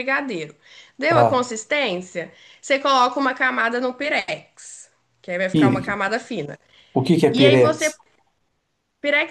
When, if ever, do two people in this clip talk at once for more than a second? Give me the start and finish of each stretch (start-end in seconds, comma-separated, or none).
none